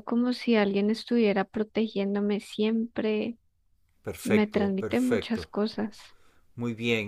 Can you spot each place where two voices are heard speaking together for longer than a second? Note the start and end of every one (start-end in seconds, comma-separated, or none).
4.2-5.5